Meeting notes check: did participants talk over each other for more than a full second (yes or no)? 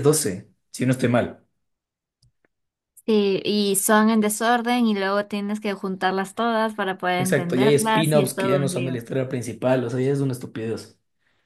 yes